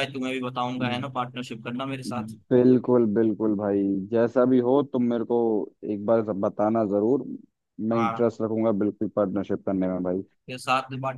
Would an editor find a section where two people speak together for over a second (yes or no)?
no